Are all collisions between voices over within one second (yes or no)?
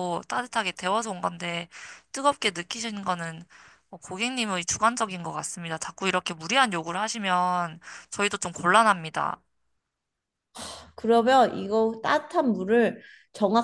yes